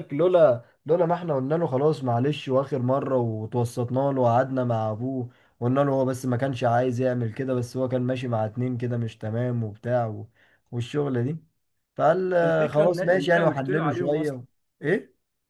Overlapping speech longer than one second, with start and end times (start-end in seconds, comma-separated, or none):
12.4-14.4